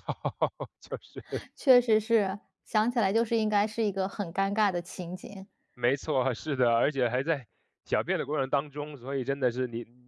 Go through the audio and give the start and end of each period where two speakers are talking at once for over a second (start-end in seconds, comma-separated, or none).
none